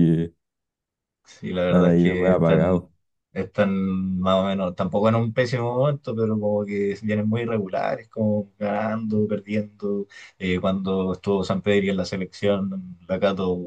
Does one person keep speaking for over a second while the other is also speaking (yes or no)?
yes